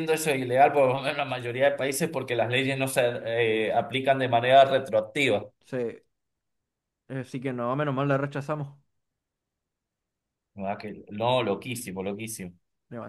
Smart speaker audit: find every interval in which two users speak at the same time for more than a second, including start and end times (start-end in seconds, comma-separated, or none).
none